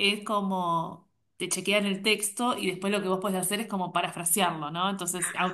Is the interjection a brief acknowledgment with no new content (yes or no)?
yes